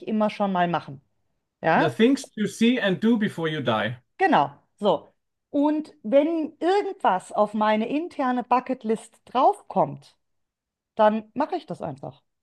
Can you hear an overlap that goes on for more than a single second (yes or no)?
no